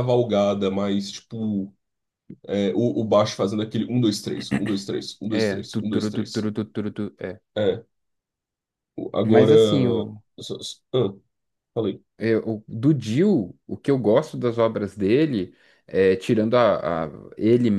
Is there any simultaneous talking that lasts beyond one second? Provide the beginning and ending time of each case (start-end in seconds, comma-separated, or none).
5.3-6.5